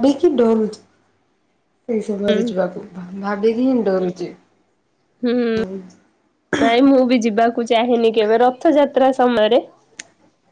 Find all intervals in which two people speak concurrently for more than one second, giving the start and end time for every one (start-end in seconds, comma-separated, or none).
none